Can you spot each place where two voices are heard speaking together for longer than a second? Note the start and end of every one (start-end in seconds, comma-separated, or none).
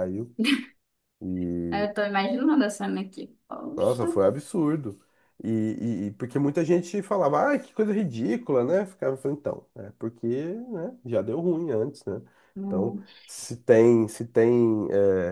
none